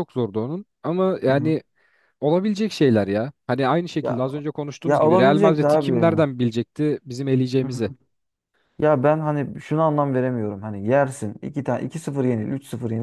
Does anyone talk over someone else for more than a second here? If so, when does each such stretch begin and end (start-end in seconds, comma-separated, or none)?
4.8-6.2